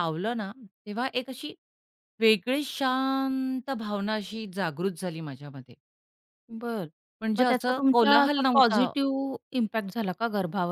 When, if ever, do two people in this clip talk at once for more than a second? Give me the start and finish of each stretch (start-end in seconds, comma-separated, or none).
7.4-8.9